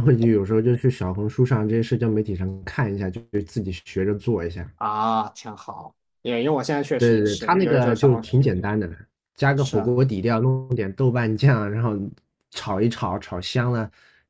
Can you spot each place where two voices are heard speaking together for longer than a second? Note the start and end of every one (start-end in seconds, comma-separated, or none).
7.0-8.4